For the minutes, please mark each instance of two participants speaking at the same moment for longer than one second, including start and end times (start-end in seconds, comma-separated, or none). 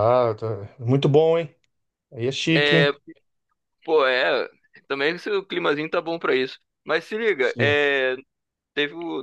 none